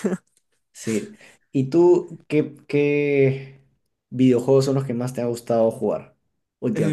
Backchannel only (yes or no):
no